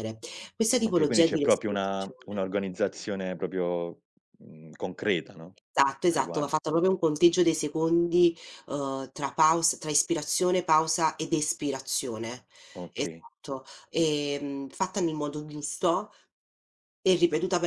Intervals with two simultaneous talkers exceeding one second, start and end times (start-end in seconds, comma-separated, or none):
0.8-2.4